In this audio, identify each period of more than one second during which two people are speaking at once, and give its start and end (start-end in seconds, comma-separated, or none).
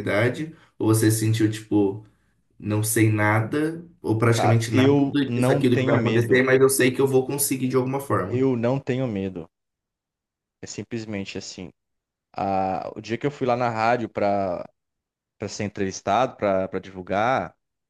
4.3-6.4